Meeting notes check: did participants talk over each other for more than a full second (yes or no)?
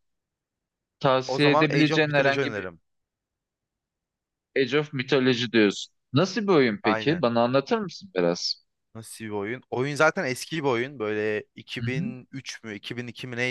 yes